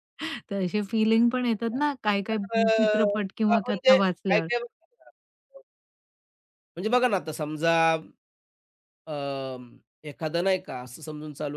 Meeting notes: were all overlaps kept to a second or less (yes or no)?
no